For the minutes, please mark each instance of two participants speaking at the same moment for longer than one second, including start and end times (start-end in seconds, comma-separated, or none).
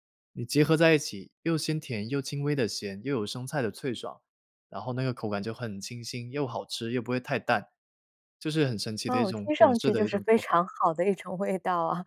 9.1-10.5